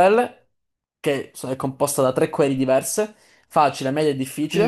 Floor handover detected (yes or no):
yes